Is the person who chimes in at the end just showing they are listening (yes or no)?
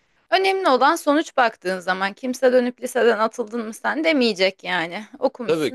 no